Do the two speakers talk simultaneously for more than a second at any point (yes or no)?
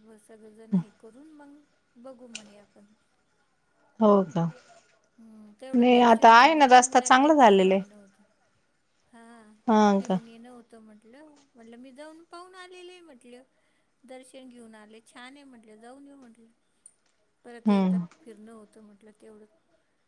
yes